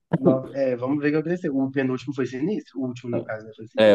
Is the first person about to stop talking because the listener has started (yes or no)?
yes